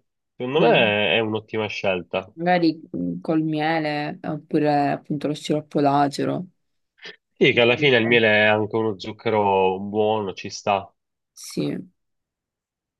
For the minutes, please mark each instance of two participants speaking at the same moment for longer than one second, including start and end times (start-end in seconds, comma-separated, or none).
none